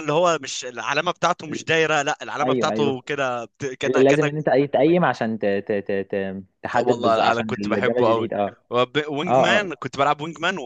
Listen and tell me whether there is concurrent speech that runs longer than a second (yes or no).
yes